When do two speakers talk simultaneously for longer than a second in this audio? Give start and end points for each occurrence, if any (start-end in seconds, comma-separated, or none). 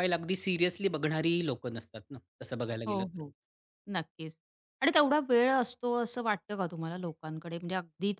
none